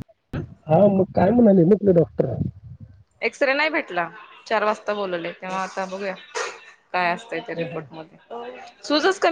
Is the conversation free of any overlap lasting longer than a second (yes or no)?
yes